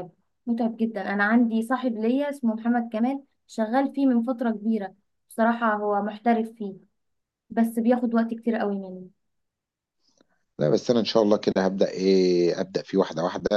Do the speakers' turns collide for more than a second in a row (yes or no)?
no